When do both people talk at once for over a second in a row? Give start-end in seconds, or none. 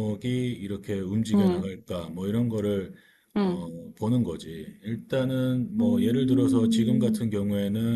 5.8-7.2